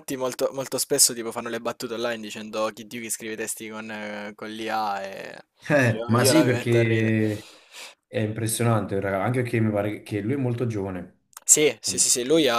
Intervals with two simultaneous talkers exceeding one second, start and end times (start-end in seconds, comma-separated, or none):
5.9-7.2